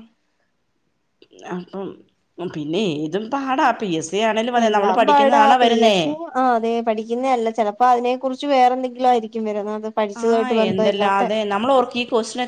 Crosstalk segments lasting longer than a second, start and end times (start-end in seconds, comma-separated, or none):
none